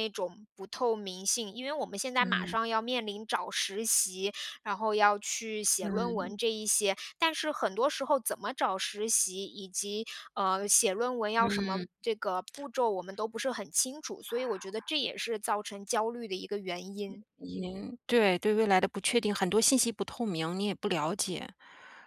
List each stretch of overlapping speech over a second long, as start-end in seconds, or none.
none